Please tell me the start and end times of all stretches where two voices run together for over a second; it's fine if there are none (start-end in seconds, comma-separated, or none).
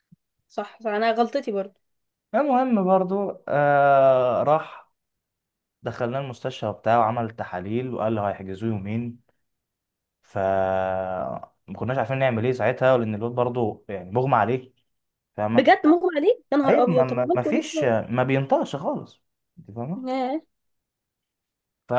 16.7-17.9